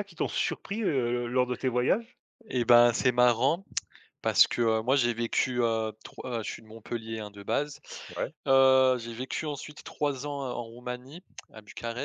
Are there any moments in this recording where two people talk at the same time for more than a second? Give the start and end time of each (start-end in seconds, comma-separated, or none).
none